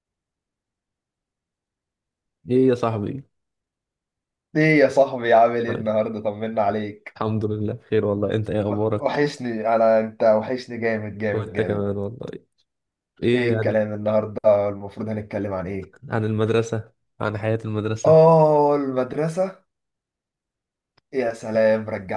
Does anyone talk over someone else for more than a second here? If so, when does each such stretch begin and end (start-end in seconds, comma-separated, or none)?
none